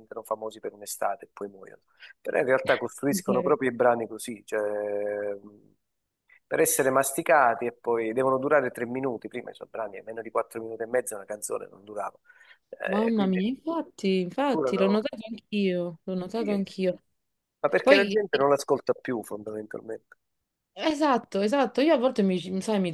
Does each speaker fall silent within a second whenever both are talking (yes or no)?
yes